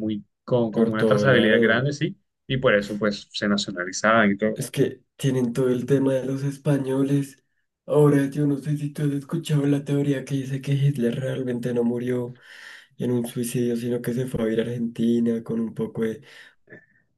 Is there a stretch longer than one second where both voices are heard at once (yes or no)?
yes